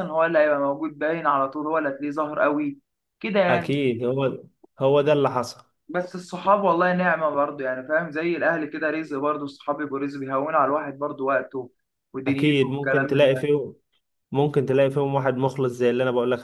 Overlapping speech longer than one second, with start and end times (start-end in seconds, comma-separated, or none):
12.3-13.5